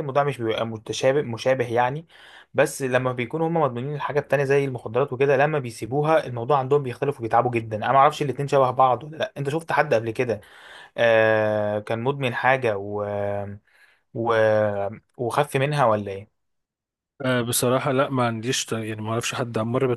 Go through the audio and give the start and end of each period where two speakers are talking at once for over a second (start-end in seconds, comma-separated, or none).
none